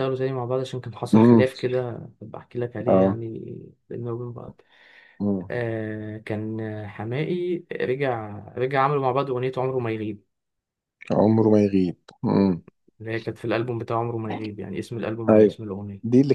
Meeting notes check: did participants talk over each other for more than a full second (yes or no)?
no